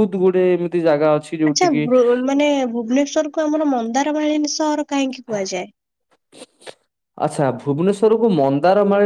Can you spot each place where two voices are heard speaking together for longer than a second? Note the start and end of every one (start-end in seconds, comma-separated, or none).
none